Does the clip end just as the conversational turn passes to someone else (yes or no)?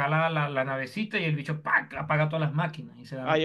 yes